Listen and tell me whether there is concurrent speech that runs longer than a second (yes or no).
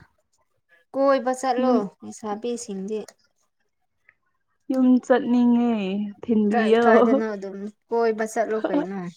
no